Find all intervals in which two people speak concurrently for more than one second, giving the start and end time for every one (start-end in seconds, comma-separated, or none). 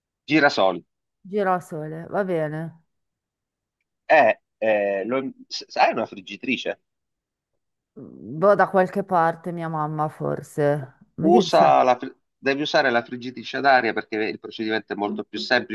none